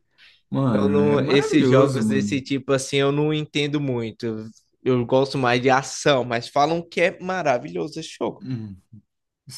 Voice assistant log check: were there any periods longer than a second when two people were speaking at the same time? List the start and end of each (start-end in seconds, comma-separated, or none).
0.7-2.4